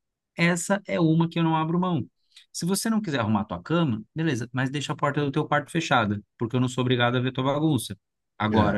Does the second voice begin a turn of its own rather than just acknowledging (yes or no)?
no